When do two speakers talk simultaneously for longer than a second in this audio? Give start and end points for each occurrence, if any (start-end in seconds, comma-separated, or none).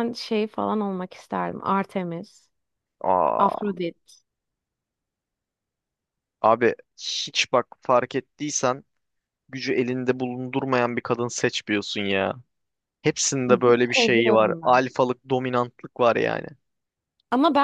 13.5-14.8